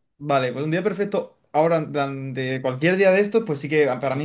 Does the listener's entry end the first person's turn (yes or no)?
no